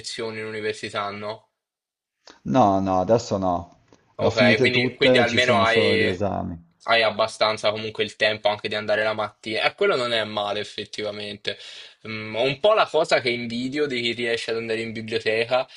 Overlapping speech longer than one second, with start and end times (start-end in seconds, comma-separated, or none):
4.2-6.3